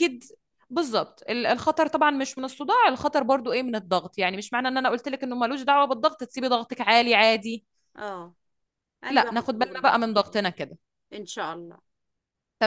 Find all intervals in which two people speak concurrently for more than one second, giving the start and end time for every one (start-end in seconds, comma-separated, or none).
9.1-10.4